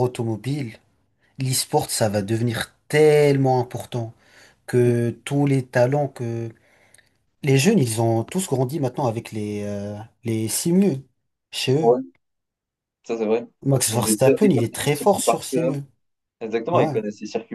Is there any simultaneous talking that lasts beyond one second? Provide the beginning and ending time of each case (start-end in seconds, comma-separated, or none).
13.9-15.7